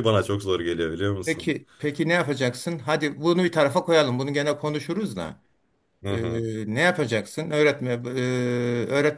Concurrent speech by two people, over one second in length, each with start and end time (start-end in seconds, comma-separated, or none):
none